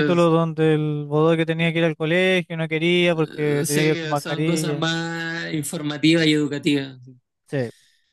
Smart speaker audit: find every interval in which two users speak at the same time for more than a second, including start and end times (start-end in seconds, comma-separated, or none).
3.1-4.9